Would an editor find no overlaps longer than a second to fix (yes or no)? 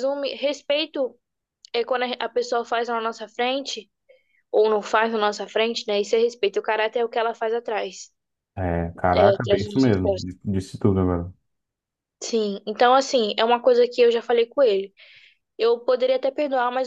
no